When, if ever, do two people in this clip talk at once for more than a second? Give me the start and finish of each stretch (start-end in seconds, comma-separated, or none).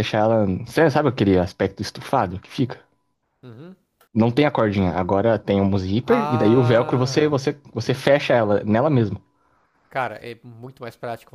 6.0-7.4